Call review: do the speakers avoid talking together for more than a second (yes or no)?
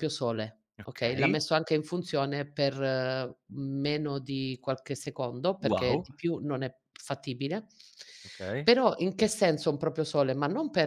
yes